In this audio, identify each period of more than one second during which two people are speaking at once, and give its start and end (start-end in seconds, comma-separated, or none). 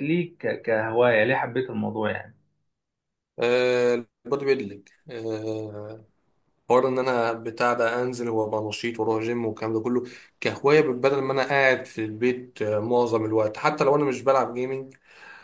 none